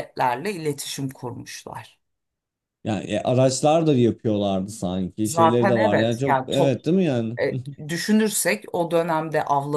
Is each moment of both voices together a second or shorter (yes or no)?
no